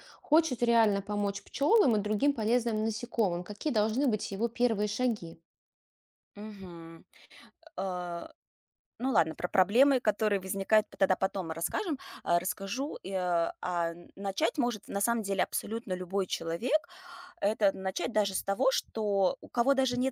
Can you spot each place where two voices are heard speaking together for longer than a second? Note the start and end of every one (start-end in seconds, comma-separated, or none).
none